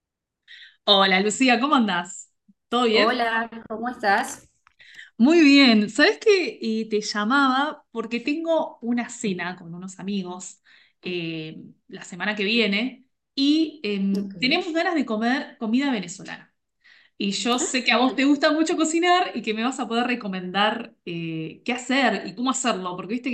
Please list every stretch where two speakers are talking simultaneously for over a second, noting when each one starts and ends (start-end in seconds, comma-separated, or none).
none